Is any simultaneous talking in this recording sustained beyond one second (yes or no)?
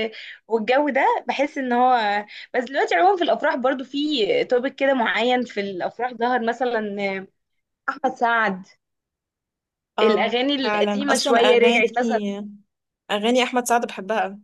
yes